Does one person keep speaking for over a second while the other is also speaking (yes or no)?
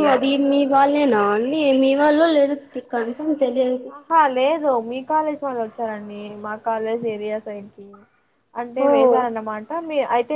no